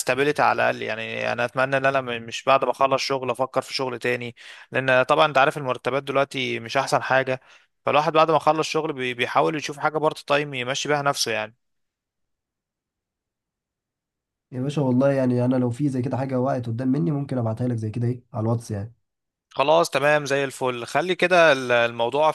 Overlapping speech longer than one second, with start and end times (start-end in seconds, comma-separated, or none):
none